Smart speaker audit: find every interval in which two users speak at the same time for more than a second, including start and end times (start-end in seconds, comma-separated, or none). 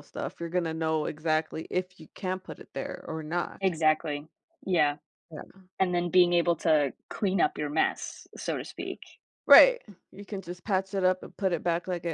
none